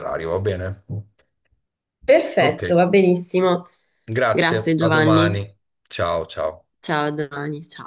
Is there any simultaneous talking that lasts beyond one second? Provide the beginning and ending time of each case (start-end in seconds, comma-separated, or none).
4.3-5.5